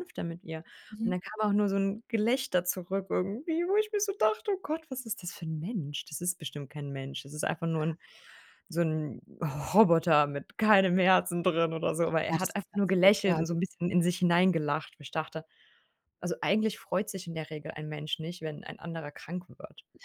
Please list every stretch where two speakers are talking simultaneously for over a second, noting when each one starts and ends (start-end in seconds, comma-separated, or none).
12.2-13.5